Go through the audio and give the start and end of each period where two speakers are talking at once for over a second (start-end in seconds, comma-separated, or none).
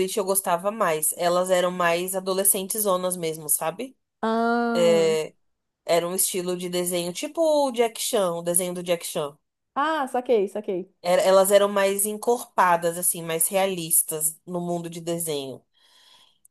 none